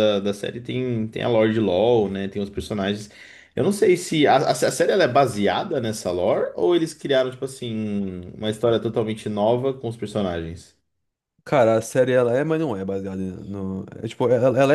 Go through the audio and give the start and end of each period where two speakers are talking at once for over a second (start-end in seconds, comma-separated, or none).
none